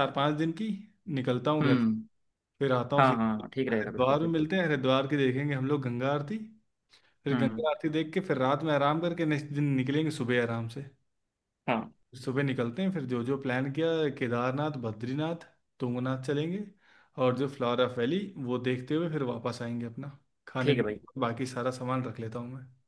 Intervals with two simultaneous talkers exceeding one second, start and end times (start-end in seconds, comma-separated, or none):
3.0-4.5